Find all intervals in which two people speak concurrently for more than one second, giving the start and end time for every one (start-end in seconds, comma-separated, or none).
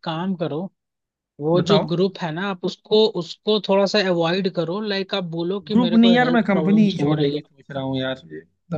5.7-7.4